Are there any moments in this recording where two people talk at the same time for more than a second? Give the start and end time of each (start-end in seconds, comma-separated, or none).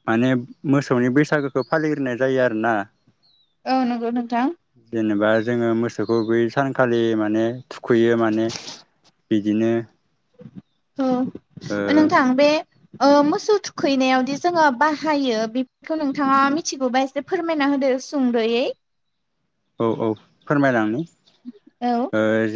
none